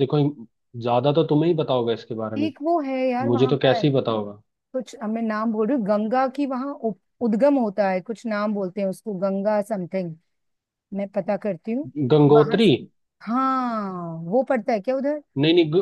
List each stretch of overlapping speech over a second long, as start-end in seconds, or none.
none